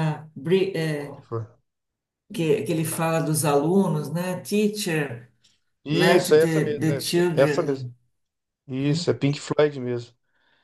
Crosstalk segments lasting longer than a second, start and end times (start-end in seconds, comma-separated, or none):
5.9-7.9